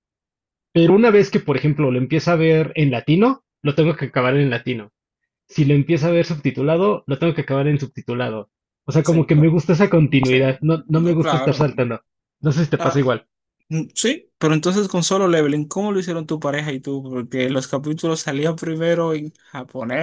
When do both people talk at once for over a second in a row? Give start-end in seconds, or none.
10.2-11.6